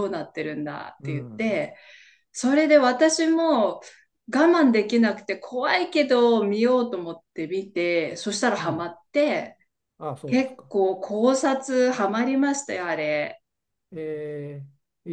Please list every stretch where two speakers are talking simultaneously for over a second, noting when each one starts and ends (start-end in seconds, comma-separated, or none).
none